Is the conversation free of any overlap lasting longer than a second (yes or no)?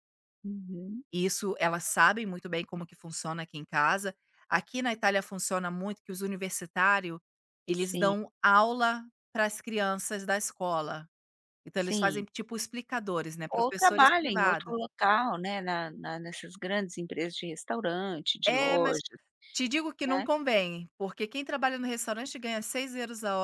no